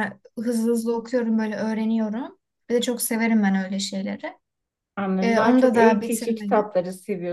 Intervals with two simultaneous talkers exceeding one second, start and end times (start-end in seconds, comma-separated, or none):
5.2-6.7